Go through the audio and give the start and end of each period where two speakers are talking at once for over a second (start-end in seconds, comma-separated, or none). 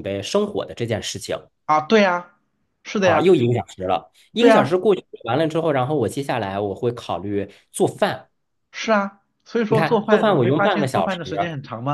9.7-11.2